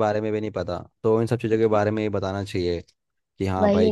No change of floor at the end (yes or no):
yes